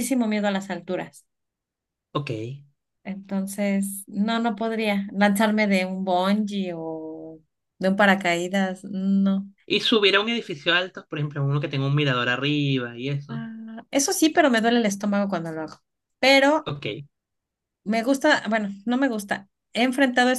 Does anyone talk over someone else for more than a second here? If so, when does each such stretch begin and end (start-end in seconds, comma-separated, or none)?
none